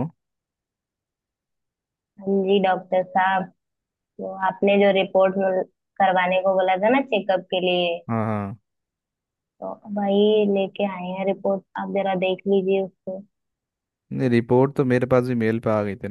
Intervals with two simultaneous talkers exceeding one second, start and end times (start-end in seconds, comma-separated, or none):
none